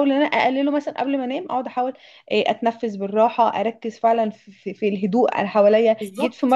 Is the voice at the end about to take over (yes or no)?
no